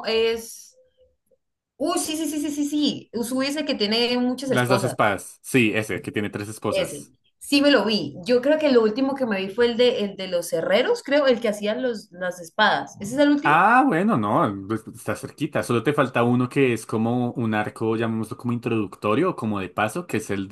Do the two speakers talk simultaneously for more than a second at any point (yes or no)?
no